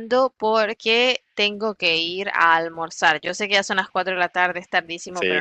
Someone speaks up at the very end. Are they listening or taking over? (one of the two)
listening